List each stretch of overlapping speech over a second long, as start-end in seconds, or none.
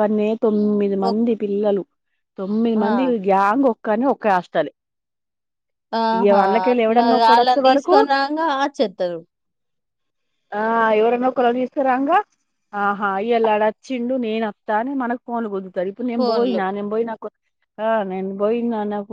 6.2-8.0